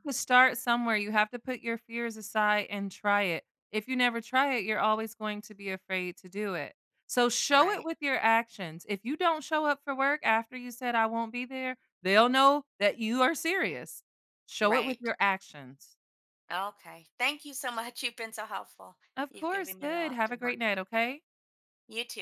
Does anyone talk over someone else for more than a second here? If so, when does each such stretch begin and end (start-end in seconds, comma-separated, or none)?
19.1-20.8